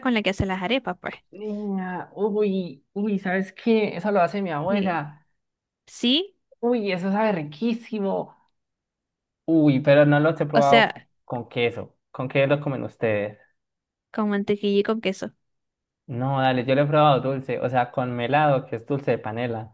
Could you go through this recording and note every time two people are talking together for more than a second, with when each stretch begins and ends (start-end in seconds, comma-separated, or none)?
none